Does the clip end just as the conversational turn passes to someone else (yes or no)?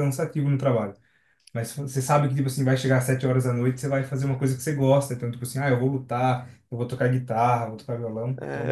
yes